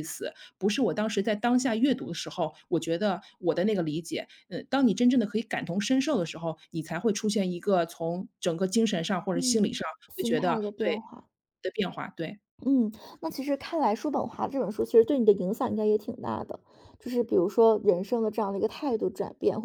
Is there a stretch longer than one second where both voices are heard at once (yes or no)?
yes